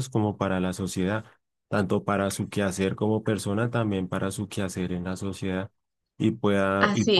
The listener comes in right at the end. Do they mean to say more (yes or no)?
no